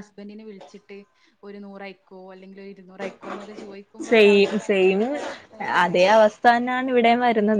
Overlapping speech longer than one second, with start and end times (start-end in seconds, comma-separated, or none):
none